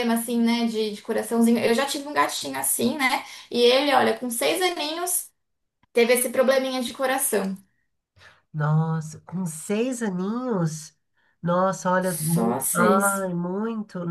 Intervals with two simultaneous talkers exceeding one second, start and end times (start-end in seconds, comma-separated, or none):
12.0-13.2